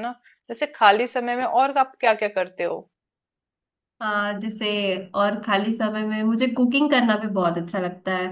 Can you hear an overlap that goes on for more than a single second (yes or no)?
no